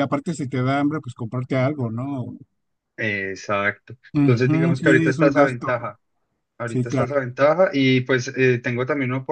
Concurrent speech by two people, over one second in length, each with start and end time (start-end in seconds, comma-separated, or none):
4.2-5.7